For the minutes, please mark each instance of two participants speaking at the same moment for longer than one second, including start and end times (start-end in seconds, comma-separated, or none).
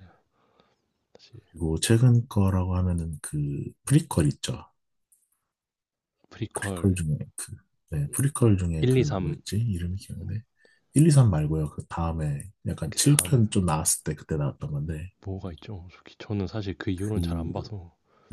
none